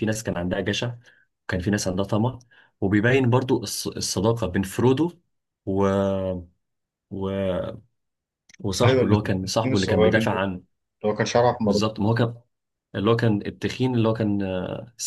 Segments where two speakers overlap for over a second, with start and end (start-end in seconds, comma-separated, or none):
8.8-10.4